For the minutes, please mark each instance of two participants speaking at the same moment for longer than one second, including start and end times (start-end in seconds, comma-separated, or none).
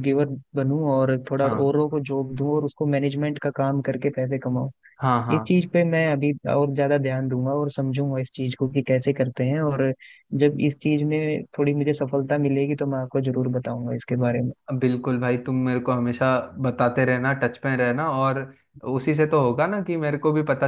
none